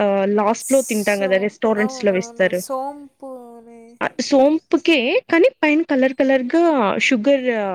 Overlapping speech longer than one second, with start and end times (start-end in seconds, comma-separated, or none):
0.6-2.6